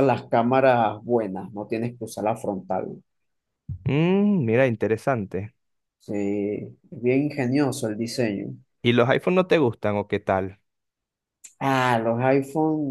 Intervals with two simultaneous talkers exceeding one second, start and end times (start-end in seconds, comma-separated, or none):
none